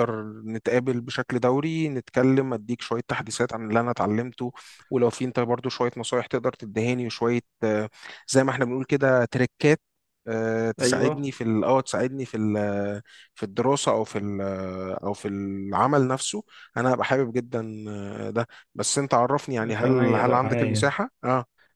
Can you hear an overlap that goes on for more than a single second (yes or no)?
yes